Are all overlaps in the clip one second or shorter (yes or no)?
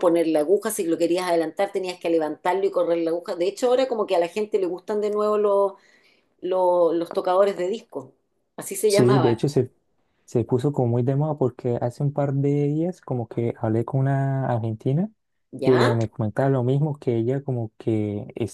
yes